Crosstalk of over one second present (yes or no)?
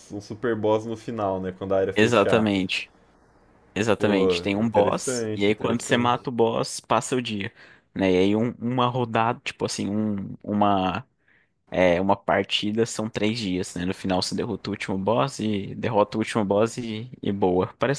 yes